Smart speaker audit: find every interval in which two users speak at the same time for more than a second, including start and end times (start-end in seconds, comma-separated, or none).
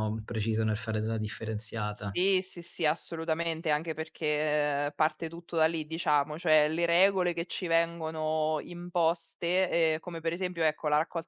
none